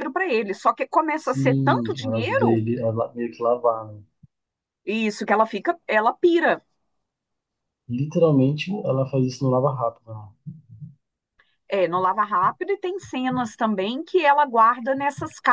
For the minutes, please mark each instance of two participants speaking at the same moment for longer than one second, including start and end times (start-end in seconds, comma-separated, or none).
1.2-2.6